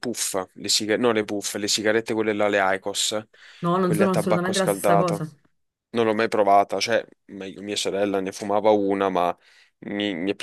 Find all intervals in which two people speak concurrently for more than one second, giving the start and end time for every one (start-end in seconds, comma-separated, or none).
3.8-5.2